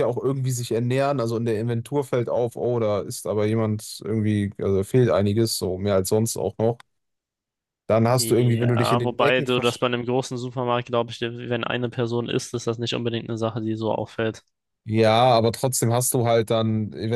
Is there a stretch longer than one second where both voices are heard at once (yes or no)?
yes